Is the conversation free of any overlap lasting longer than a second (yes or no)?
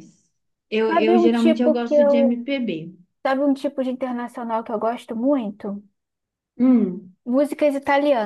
no